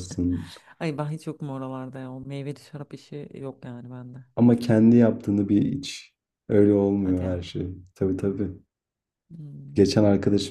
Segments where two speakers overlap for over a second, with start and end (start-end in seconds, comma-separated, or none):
none